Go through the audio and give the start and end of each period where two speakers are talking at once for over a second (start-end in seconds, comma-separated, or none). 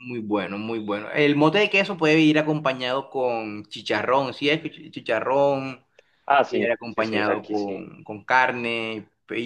6.5-7.8